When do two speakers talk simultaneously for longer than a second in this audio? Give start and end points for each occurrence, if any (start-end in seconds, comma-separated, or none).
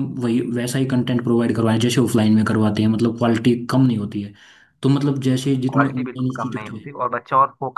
5.5-6.8